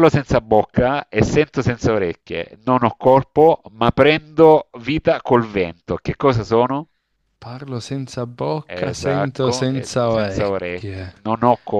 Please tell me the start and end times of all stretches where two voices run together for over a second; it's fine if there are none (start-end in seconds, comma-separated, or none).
8.7-11.1